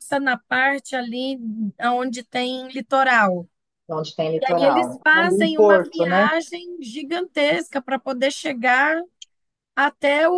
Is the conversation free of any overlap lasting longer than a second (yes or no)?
no